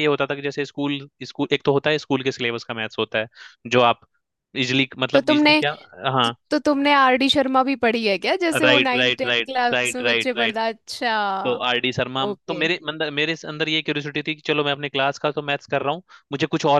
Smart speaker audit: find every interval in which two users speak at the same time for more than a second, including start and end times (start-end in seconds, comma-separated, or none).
8.6-10.6